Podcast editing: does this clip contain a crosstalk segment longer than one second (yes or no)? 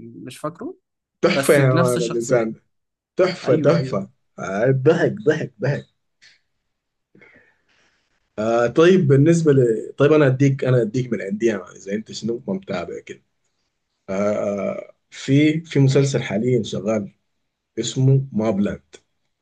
yes